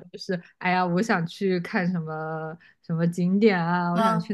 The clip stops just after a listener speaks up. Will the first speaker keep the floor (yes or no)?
yes